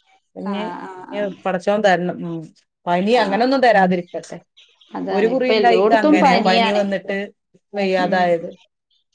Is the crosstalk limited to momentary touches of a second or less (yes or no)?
no